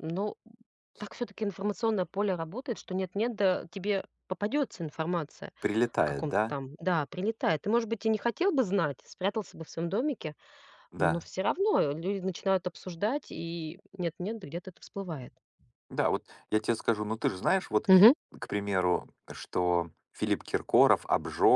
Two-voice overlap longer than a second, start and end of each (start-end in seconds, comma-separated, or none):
none